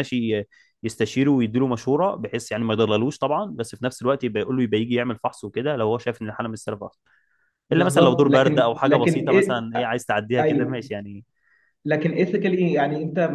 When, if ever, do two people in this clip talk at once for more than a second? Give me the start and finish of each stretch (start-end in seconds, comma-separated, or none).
7.7-9.6